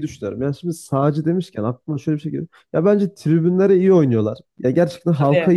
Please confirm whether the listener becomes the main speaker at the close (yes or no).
no